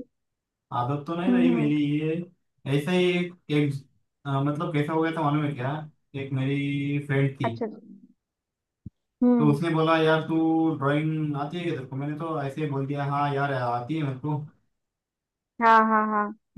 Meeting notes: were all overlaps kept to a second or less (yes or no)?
yes